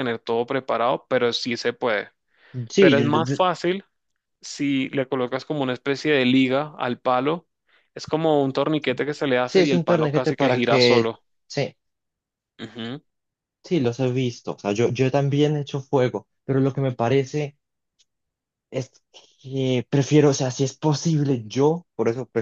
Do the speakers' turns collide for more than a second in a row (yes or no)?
yes